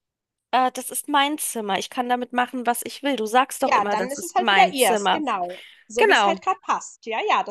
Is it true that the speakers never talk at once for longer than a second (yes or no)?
no